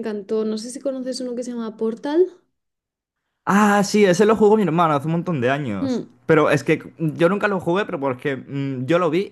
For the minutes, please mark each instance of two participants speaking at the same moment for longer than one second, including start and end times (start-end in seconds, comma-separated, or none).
none